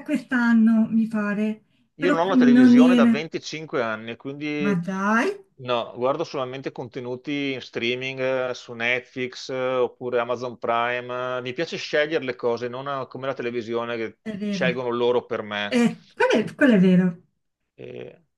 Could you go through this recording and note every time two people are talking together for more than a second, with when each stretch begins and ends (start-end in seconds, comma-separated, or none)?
1.9-3.2